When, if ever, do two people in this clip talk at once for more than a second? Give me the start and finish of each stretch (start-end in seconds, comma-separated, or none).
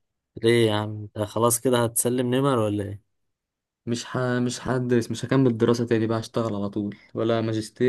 none